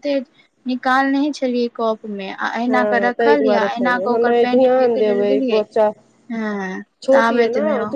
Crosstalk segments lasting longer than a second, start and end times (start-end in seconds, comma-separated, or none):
2.7-5.6